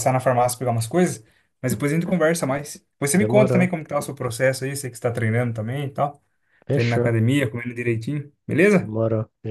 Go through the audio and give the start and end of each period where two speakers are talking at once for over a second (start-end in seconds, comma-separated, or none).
none